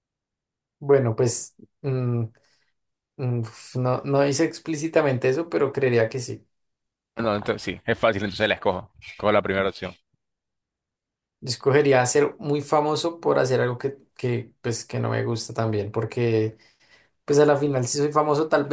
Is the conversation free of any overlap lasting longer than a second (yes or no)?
yes